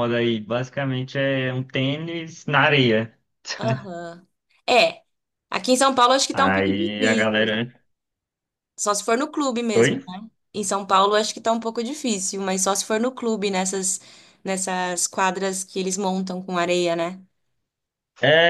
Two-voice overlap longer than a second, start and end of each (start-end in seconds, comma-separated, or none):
6.3-7.6